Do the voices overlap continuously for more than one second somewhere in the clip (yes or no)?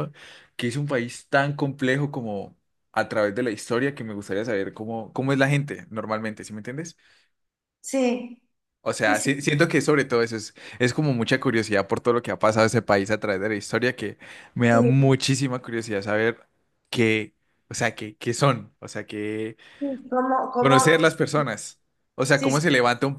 no